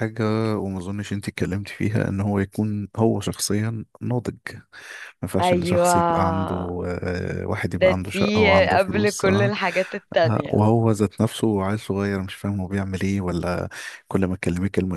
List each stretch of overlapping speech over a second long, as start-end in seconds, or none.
7.7-9.5